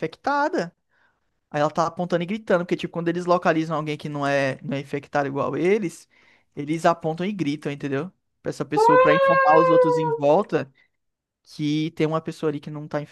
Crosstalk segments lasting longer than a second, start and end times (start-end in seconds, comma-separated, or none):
8.7-10.2